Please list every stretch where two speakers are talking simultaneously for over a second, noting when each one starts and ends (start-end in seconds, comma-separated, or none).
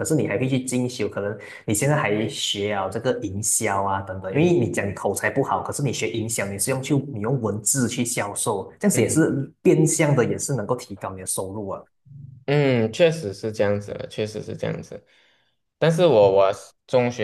none